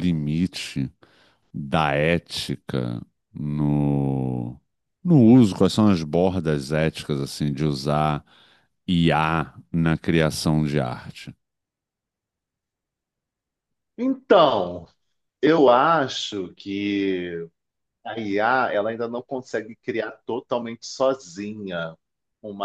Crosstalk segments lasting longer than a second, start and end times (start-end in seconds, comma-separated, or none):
none